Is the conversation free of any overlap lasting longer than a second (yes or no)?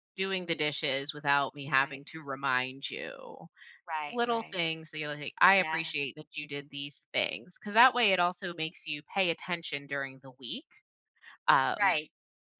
yes